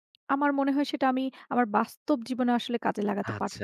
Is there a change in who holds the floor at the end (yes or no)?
yes